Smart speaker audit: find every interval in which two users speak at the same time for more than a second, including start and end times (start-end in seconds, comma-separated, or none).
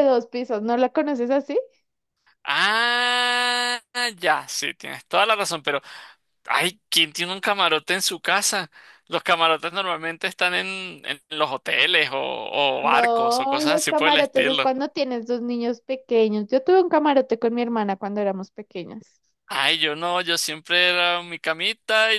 12.8-14.7